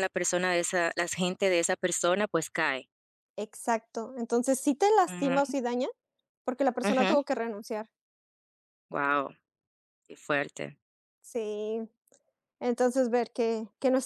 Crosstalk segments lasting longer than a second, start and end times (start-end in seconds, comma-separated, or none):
none